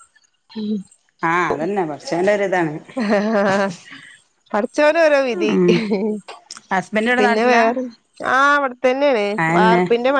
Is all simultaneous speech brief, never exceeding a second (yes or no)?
yes